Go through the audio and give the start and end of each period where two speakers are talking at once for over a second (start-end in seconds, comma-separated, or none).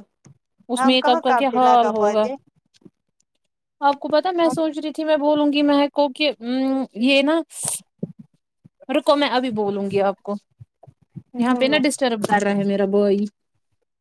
0.8-2.3